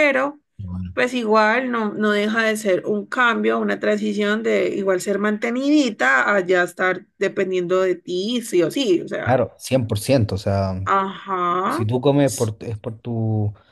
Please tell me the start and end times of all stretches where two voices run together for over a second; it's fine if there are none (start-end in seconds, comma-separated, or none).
none